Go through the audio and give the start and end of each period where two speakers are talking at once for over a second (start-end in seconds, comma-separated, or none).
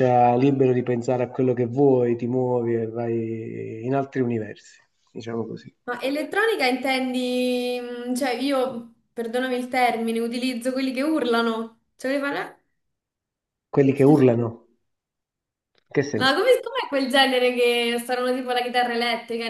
none